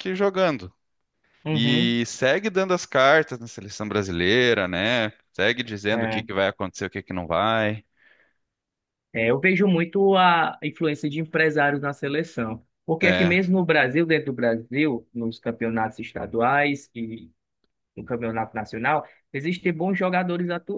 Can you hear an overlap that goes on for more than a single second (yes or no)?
no